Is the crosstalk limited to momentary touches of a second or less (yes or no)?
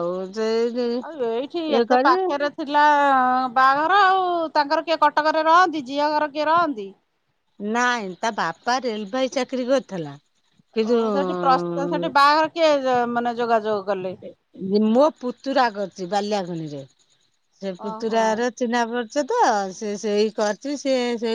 yes